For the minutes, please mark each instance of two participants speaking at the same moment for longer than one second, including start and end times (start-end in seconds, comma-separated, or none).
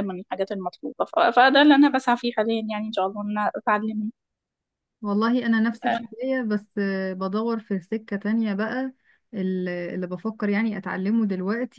none